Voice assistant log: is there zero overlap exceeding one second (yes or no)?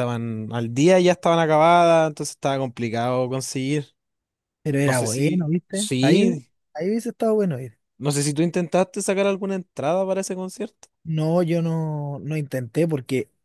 no